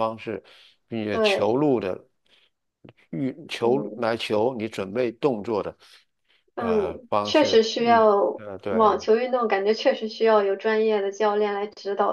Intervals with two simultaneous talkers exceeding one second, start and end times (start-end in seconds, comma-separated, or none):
6.6-9.0